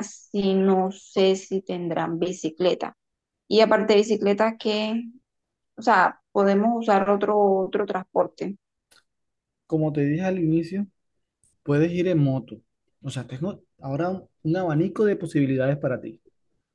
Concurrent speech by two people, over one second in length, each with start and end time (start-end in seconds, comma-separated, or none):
none